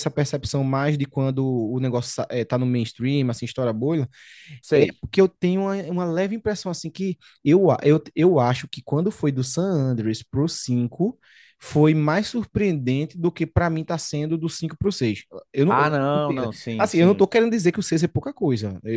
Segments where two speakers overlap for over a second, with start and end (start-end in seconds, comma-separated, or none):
15.7-17.3